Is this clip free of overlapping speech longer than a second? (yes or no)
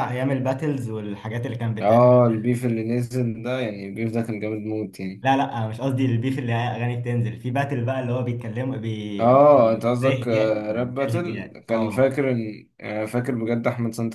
no